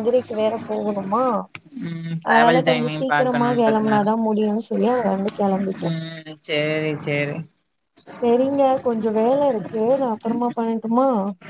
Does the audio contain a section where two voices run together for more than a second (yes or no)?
yes